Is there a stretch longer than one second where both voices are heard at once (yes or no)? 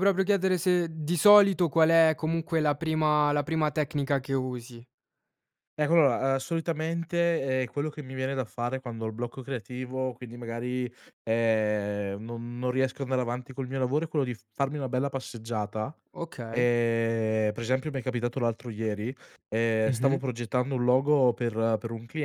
no